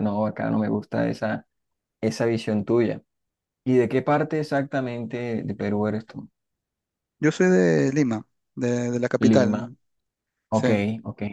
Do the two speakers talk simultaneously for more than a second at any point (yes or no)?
no